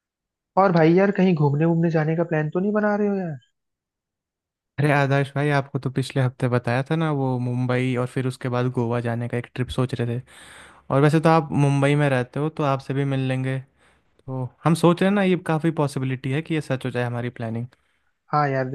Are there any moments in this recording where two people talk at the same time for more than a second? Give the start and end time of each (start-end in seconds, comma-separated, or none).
none